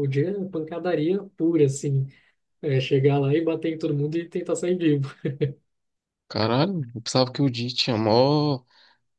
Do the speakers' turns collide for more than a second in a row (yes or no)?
no